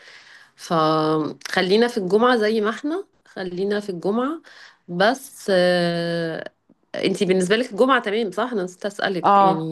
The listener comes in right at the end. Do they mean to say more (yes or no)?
yes